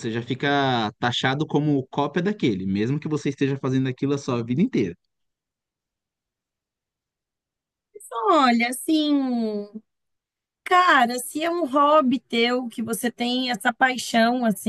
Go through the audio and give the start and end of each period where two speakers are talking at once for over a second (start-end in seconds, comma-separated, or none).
none